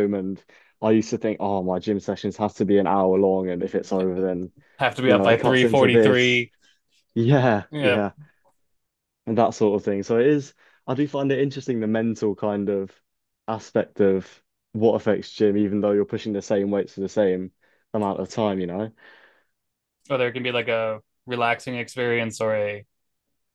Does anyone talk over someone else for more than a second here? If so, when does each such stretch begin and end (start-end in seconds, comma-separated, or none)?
5.0-6.4